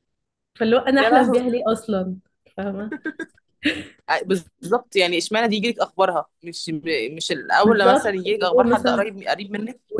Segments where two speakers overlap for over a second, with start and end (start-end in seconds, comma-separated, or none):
7.6-9.0